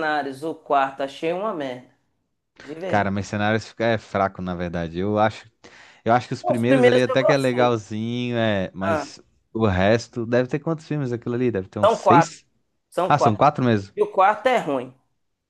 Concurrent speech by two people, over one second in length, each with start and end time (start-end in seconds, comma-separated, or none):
6.4-7.8